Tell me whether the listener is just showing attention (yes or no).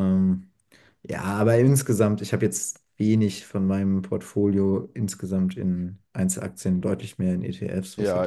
no